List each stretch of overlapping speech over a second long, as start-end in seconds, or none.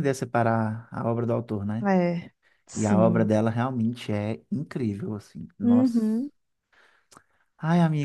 none